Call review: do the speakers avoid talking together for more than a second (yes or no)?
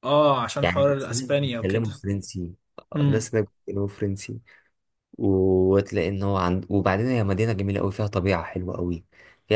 no